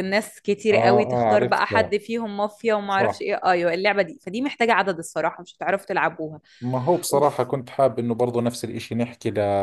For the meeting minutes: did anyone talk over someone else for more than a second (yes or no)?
yes